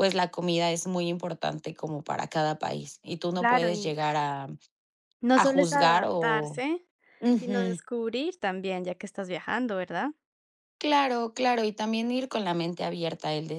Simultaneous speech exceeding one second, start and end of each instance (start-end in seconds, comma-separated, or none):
5.4-6.6